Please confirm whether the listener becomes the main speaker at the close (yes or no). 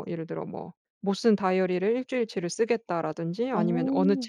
no